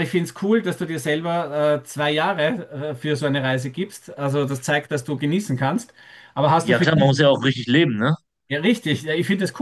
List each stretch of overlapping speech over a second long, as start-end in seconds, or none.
none